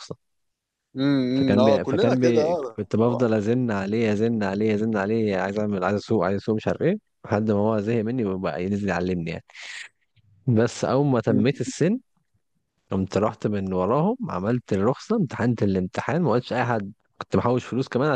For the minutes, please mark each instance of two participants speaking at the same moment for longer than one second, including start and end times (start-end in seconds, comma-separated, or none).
1.3-3.2